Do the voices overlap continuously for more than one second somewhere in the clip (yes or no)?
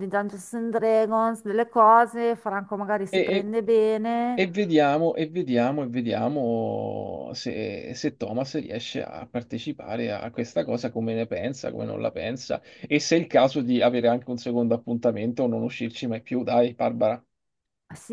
no